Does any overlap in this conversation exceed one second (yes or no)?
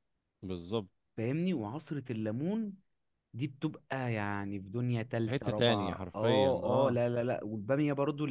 yes